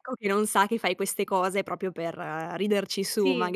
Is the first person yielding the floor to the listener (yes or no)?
yes